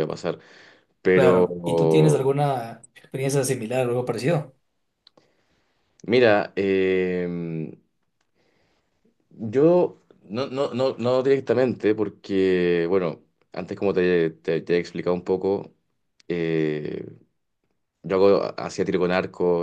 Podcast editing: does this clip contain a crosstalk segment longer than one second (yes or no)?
yes